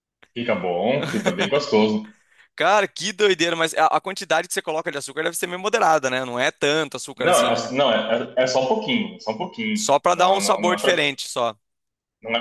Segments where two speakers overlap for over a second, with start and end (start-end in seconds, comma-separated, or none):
9.7-10.9